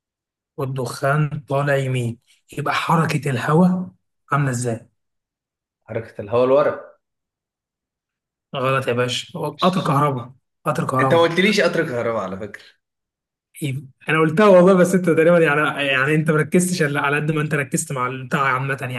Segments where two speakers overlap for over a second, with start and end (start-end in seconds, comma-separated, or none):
none